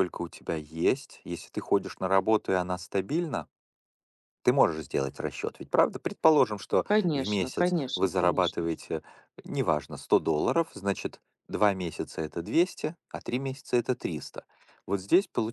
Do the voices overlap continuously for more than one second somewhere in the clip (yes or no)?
yes